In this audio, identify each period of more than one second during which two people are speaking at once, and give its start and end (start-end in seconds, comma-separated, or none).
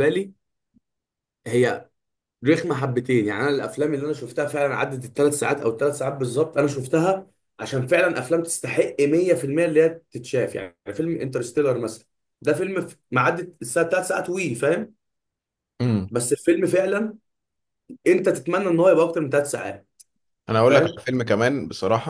none